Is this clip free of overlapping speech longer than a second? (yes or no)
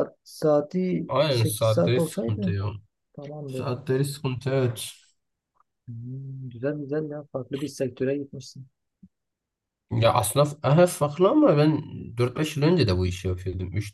no